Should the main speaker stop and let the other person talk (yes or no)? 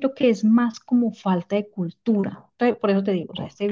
no